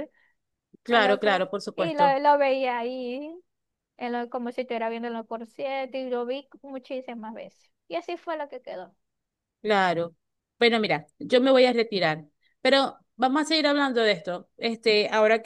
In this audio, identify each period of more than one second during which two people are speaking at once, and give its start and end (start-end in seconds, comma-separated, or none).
0.9-2.2